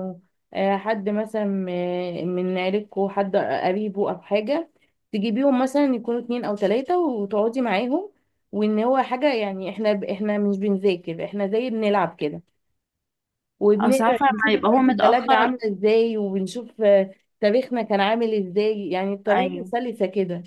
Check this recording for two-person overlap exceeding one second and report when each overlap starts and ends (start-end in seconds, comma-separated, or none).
13.8-15.5